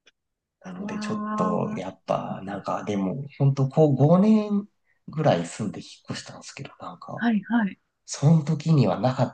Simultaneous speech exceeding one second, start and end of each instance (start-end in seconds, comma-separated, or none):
0.8-2.0